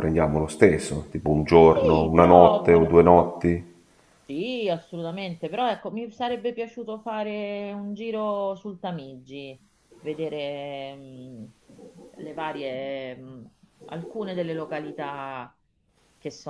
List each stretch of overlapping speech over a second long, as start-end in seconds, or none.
1.7-2.9